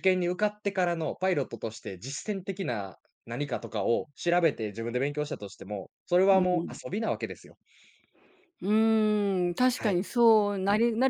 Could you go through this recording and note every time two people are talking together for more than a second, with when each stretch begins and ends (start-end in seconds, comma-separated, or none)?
none